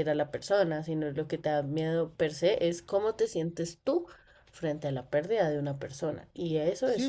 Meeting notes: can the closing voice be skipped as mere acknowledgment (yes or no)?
no